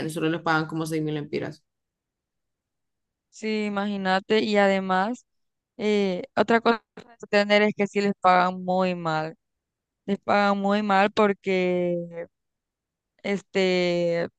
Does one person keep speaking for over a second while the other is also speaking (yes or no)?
no